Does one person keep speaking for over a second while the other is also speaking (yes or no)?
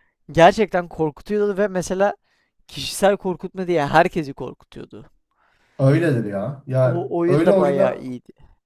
yes